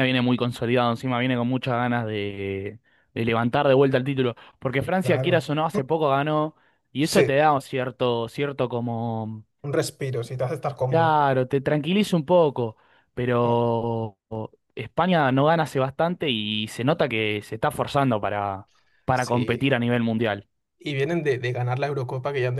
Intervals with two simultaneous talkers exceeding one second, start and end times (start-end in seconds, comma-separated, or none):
none